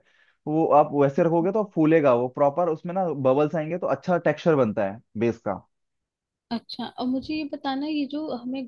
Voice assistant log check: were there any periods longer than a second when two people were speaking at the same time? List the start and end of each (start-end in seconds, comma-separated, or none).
none